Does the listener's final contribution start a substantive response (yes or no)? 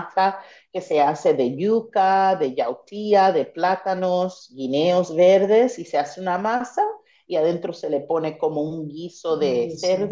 no